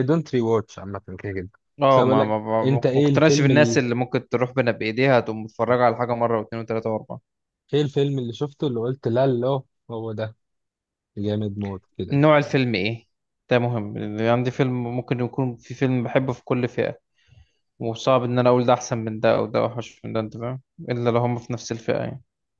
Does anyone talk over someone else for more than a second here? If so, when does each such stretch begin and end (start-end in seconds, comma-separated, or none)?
1.9-3.5